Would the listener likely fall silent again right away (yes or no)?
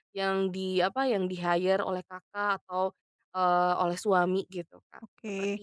no